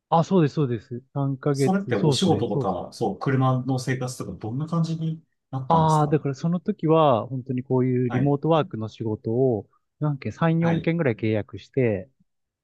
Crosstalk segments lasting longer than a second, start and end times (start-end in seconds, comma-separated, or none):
1.5-2.8